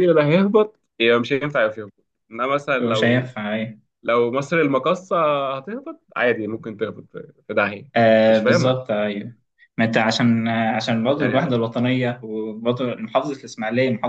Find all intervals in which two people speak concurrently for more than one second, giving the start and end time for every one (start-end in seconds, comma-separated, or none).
none